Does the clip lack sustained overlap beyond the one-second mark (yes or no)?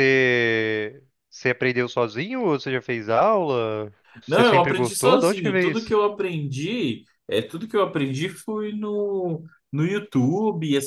no